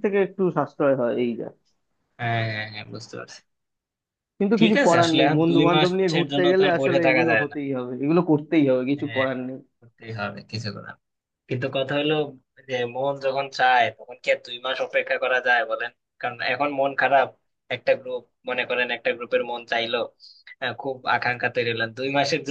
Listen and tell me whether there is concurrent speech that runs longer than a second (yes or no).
yes